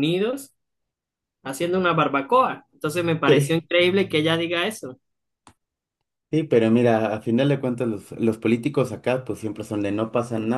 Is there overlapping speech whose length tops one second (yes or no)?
no